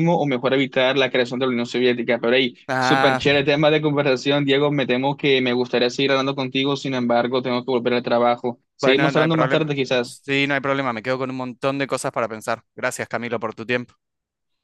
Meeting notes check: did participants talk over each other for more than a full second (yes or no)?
yes